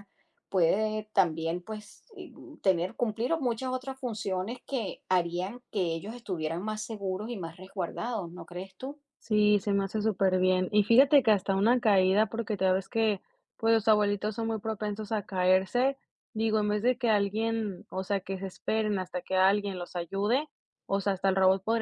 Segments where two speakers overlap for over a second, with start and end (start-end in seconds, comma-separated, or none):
none